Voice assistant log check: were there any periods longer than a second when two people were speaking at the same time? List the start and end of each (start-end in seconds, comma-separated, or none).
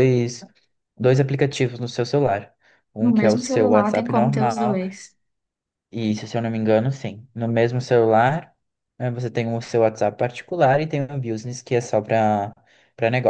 3.0-4.8